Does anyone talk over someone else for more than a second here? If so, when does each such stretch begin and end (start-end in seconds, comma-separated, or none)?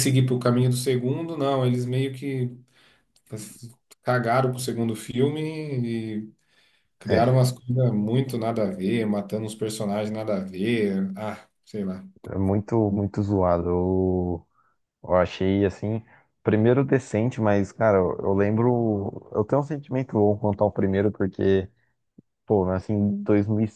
none